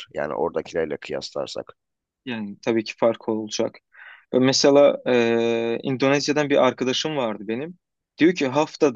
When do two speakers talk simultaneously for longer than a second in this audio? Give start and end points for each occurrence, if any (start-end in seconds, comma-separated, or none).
none